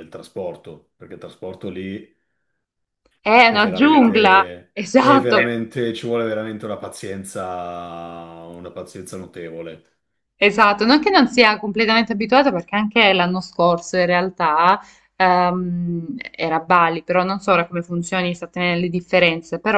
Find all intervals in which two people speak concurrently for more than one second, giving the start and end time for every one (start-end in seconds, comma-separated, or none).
3.5-5.4